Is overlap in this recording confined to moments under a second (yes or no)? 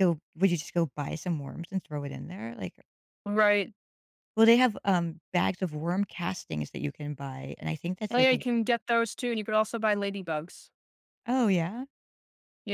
yes